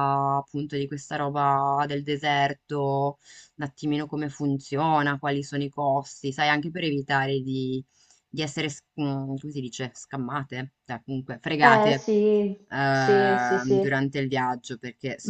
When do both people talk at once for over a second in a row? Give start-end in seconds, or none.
12.7-14.0